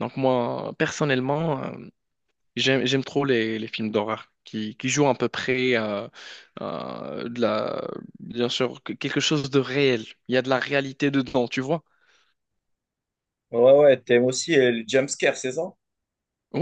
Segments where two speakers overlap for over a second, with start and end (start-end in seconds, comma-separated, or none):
none